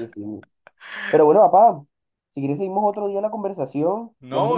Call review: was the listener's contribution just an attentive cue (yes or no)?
no